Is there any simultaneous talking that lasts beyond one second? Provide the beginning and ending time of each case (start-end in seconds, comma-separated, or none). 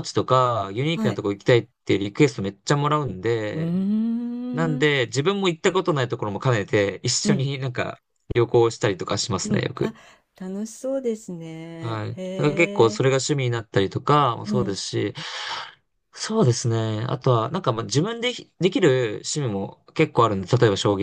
11.8-13.2